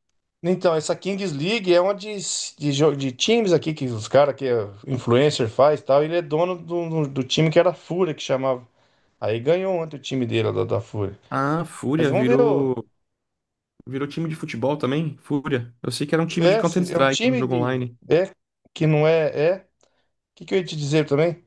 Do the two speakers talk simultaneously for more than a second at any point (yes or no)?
yes